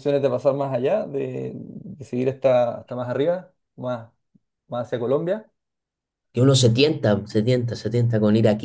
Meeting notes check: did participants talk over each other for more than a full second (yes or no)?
no